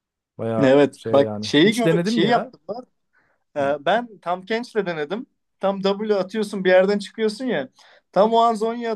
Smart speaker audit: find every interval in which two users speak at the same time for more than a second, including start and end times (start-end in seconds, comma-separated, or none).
0.6-2.5